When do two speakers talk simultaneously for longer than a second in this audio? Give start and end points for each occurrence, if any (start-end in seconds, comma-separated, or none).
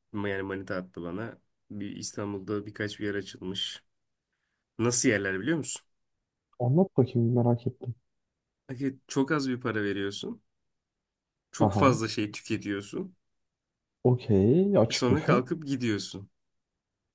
none